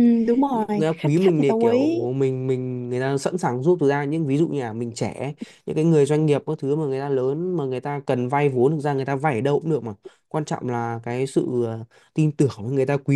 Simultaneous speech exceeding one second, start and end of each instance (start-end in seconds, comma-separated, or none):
0.5-2.0